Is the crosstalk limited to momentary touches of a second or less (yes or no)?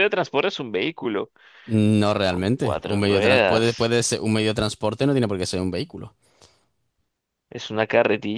no